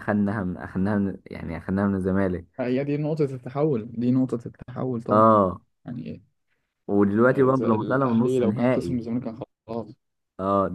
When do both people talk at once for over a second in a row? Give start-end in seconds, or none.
7.3-9.0